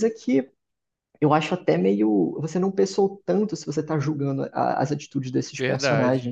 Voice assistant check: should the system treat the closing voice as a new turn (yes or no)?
yes